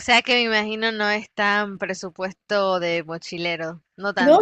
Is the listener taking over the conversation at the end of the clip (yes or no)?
yes